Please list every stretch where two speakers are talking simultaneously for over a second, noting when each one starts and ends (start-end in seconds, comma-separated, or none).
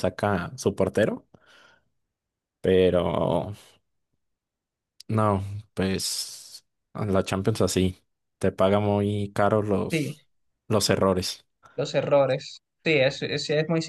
none